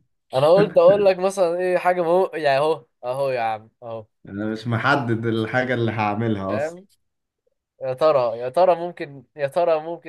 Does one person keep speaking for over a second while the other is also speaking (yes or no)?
no